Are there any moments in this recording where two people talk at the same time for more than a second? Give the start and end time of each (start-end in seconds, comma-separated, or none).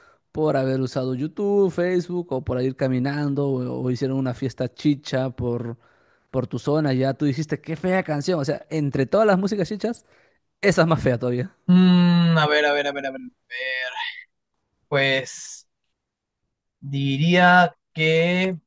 none